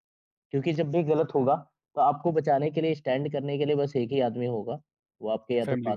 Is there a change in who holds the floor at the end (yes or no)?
no